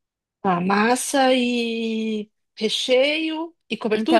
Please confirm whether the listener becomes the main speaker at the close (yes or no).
yes